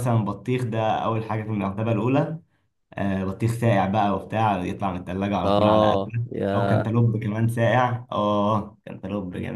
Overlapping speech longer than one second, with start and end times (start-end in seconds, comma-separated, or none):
5.4-6.9